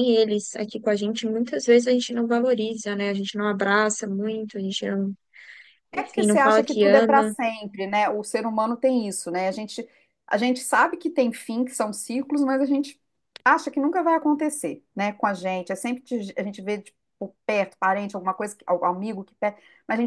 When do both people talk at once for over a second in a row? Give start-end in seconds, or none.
5.9-7.3